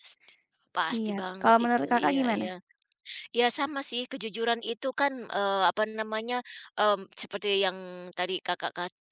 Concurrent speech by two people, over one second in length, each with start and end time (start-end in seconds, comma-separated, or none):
0.9-2.5